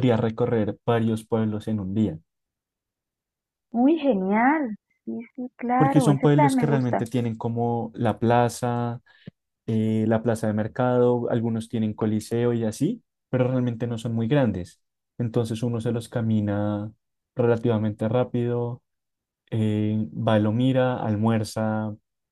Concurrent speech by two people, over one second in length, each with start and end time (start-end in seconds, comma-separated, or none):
5.8-7.1